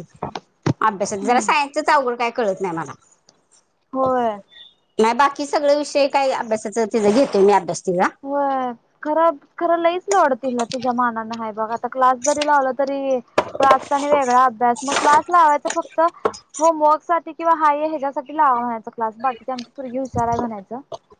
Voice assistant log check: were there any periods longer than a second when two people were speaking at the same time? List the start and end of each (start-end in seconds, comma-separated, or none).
none